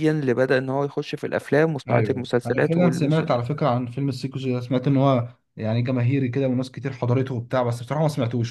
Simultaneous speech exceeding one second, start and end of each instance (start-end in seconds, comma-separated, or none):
1.9-3.2